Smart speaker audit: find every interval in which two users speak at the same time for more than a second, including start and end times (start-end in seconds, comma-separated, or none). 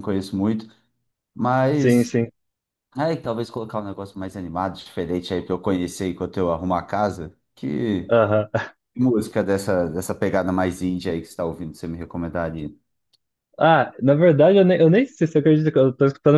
none